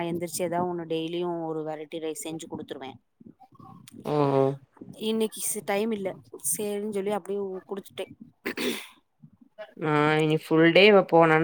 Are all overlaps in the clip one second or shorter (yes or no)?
yes